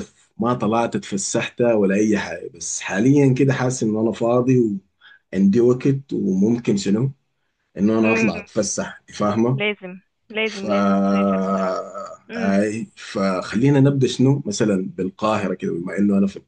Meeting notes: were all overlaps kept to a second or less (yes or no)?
yes